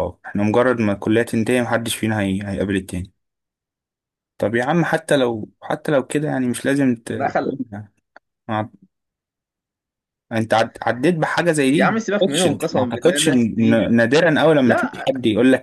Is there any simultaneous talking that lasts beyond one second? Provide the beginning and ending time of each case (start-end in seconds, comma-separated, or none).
11.7-13.3